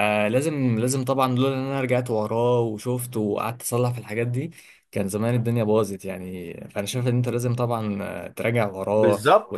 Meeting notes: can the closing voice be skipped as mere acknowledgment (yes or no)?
no